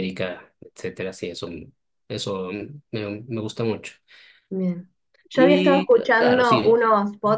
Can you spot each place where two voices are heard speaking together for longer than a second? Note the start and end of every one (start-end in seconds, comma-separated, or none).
5.3-6.8